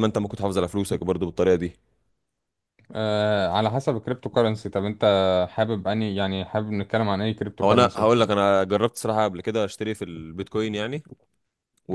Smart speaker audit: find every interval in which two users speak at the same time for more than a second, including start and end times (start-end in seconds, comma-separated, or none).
none